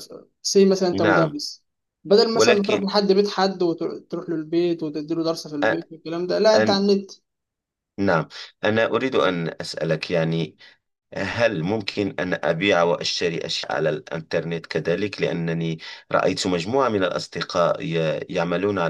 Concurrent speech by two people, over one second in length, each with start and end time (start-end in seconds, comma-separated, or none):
none